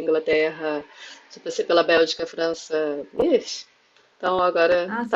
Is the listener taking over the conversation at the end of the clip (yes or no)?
yes